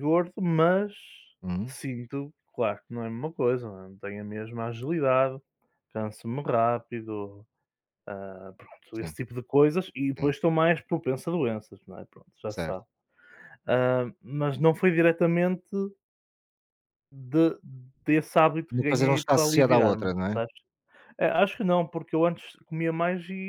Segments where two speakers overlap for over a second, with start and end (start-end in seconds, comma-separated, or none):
18.7-20.4